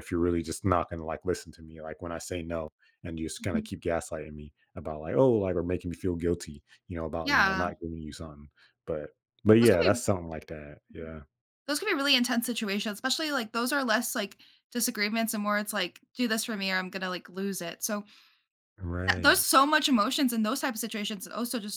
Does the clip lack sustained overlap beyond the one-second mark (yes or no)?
yes